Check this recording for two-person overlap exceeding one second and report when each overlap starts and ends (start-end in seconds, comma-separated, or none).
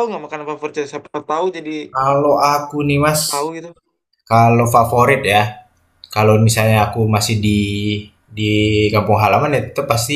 none